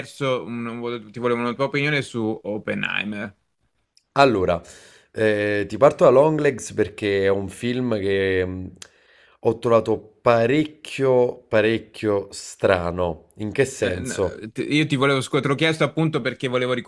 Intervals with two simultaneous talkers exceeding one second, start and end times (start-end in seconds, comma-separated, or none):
none